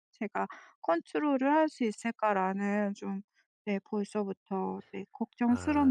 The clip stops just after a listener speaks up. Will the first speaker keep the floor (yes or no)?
no